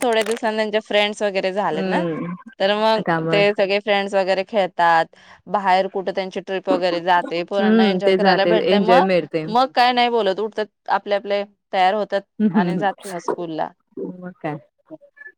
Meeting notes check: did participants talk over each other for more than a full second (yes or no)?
yes